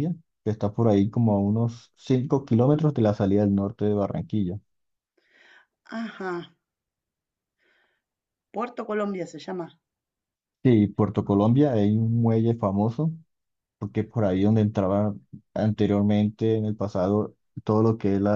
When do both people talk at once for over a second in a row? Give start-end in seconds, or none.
none